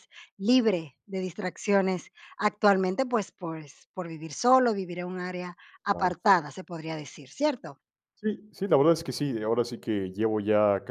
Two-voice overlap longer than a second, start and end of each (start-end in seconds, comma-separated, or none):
none